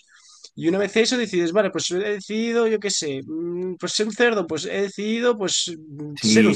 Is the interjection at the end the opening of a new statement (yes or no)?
yes